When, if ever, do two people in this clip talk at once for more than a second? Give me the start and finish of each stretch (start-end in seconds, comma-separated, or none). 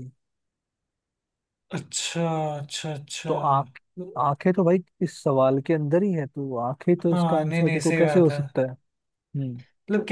7.1-8.4